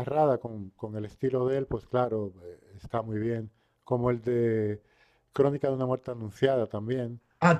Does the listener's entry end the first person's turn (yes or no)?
yes